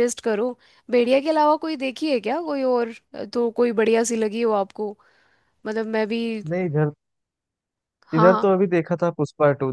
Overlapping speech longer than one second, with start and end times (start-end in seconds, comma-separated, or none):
none